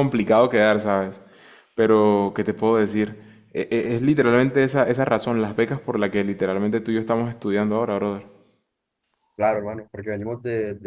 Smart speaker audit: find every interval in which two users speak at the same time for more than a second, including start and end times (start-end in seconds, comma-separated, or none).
none